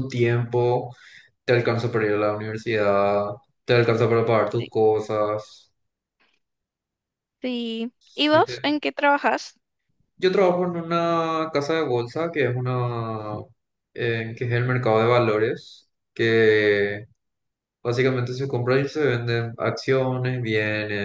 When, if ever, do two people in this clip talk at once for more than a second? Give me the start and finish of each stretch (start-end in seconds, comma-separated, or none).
none